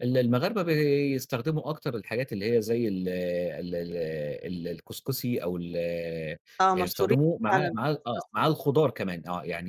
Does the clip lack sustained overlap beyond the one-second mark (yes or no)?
no